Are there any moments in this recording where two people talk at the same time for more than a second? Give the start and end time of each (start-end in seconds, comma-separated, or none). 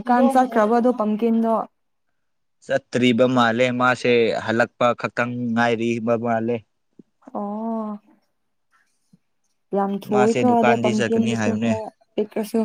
10.1-11.7